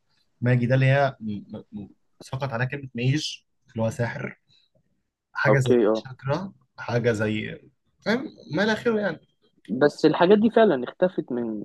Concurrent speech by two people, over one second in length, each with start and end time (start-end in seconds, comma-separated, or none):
none